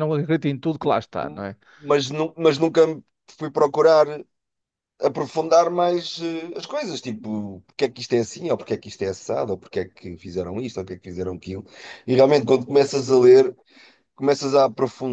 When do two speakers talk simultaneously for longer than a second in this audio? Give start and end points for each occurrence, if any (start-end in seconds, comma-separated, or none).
none